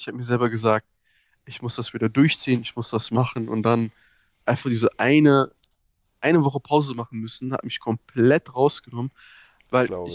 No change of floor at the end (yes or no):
yes